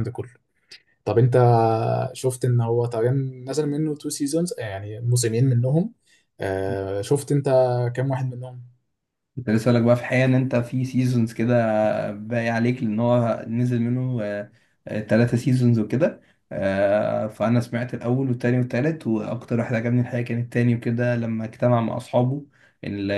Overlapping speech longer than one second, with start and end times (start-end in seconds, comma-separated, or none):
none